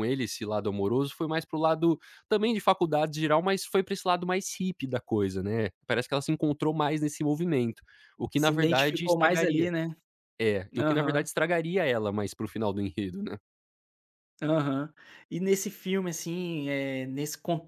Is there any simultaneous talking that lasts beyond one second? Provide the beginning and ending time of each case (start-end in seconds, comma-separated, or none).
8.4-9.7